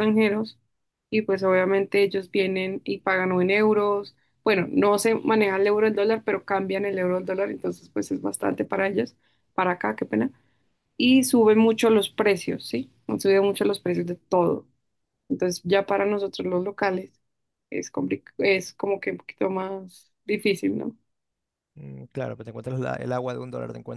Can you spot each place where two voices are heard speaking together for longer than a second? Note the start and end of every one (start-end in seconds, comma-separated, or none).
none